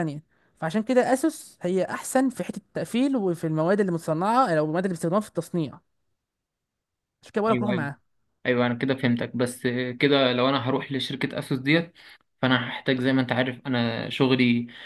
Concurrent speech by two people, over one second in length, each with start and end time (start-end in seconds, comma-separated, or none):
none